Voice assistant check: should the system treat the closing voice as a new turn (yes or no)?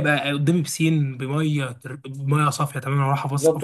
yes